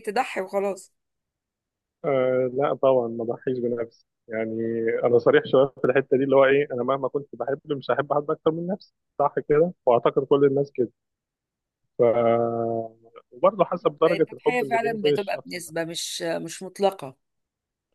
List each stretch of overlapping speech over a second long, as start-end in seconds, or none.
14.2-15.7